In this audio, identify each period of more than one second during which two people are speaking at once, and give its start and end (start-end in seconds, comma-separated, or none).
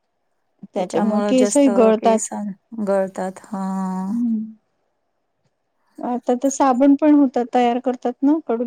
0.8-2.3